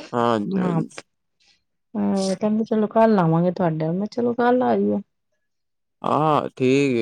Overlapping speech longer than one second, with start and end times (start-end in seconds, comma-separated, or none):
none